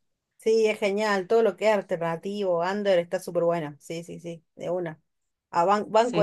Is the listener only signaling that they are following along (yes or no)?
yes